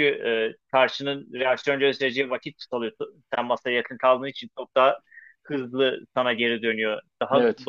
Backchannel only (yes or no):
yes